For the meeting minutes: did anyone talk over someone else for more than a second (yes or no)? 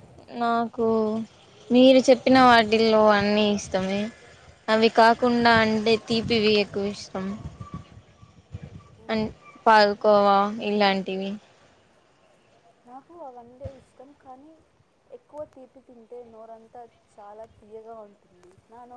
no